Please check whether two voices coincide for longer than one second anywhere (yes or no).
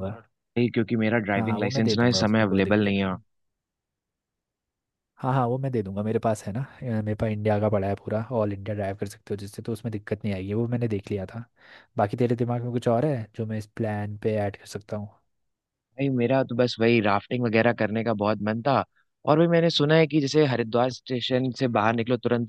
yes